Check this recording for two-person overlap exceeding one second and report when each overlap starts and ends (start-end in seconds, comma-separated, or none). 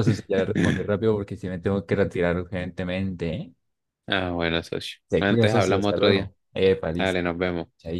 5.1-6.3